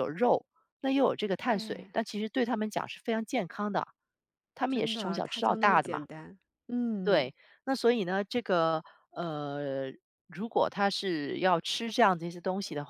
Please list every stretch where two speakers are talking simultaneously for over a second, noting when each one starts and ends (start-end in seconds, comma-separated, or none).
4.7-6.0